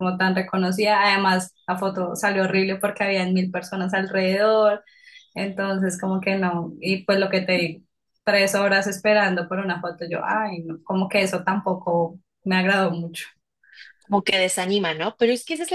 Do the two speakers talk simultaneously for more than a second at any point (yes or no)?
no